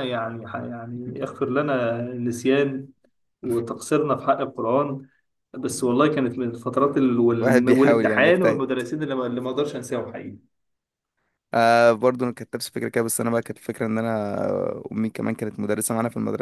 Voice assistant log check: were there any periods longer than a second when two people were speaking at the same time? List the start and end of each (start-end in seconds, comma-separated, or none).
7.4-8.6